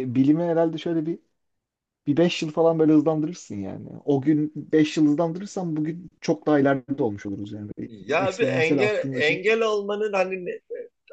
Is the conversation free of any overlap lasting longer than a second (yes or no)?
no